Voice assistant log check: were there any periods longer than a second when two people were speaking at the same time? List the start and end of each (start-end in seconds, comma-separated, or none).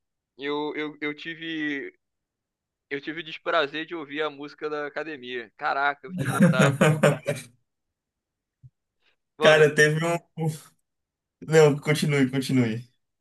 none